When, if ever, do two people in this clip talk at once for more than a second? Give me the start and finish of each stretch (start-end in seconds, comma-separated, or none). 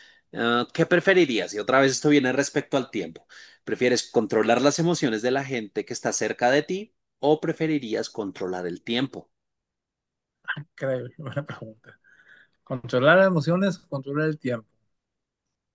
none